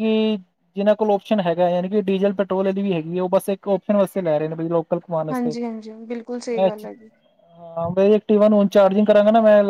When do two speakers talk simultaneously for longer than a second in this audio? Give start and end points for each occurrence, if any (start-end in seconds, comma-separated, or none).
none